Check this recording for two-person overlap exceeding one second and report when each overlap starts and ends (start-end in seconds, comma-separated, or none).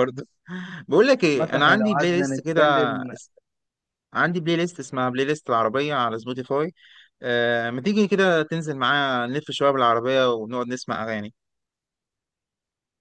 1.3-2.6